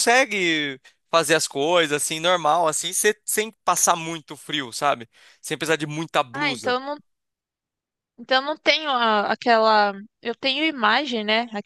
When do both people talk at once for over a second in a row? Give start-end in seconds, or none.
none